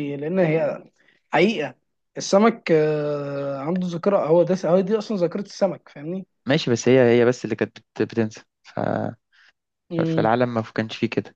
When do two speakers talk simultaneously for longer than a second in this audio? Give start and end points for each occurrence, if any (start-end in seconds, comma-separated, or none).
none